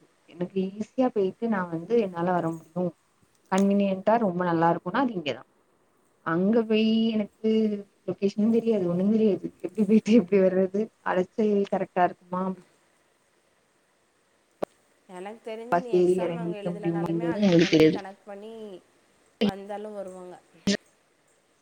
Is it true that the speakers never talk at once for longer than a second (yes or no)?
no